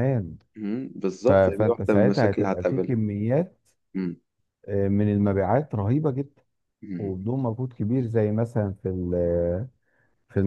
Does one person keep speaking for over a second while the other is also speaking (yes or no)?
yes